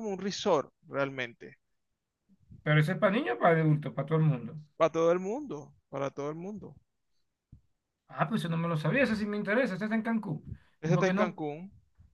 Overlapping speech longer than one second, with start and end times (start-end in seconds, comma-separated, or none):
none